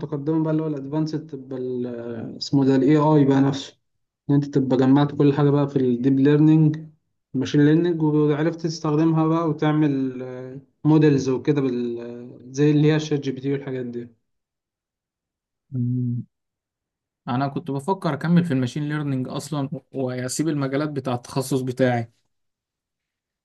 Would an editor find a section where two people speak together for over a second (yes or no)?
no